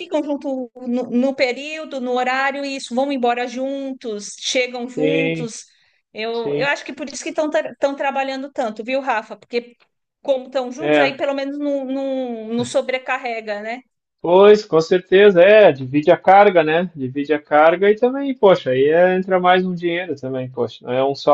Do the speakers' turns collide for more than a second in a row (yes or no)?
no